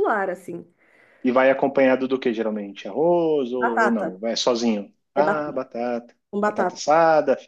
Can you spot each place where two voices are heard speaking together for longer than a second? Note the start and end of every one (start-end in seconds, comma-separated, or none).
none